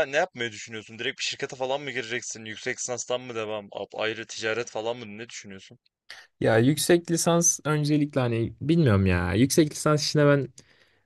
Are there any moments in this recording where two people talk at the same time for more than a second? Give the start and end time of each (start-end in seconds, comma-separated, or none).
none